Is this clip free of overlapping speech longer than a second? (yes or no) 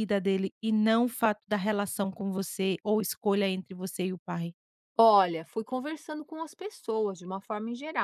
yes